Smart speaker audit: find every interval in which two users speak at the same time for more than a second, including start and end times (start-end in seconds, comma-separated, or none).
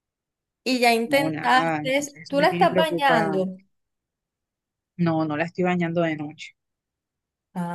1.1-3.5